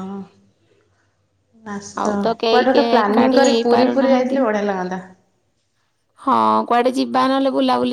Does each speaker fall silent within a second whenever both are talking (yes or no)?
no